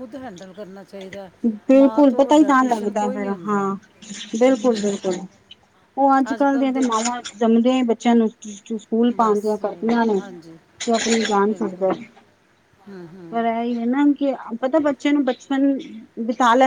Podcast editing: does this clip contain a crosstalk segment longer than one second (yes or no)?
yes